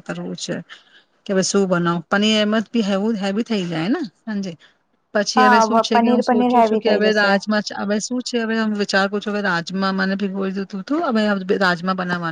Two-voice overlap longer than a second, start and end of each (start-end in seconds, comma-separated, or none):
5.4-7.4